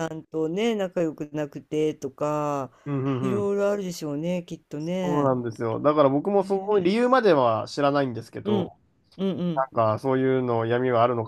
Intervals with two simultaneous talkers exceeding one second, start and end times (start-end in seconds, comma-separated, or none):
none